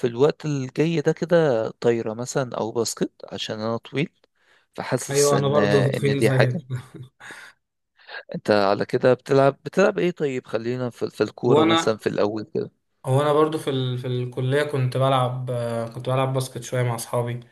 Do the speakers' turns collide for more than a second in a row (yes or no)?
yes